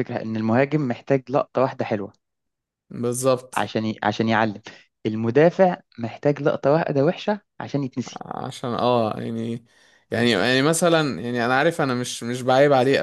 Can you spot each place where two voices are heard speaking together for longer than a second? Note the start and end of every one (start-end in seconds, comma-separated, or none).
none